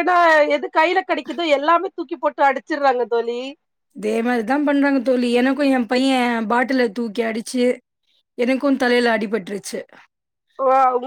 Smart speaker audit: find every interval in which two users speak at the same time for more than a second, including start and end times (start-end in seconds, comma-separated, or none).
none